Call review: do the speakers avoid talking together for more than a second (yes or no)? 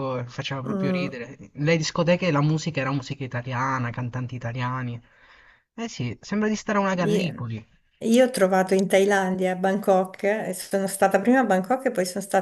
yes